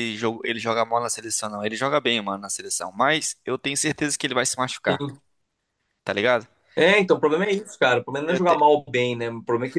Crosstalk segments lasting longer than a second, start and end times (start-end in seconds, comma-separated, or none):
none